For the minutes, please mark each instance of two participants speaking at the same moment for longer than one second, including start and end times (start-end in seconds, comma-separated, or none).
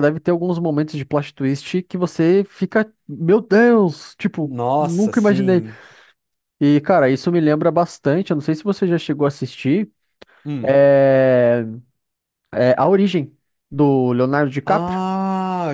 4.4-5.6